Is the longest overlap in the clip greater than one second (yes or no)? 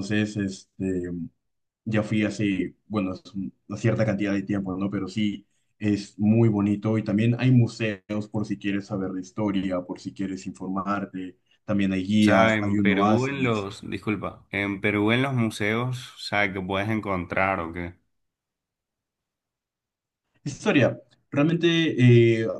yes